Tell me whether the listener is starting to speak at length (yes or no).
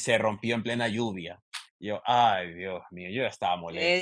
yes